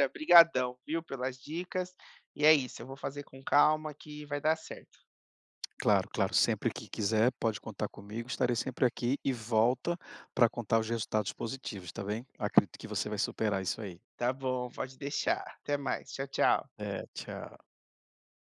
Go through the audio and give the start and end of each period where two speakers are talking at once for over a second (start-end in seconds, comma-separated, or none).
none